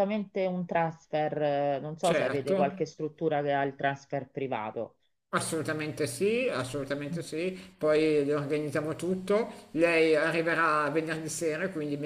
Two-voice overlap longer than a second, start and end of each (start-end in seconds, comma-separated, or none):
none